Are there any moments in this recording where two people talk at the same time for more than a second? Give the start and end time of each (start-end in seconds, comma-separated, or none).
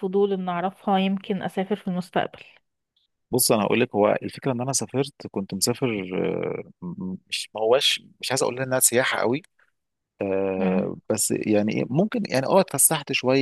none